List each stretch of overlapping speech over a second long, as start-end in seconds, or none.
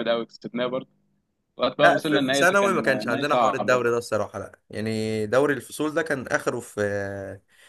1.8-3.8